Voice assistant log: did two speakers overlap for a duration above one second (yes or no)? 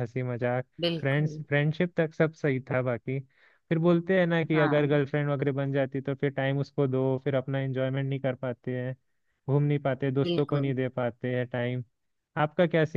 no